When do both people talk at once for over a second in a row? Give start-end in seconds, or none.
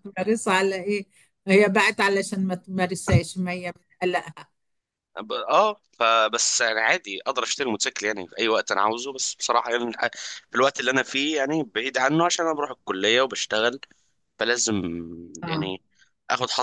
none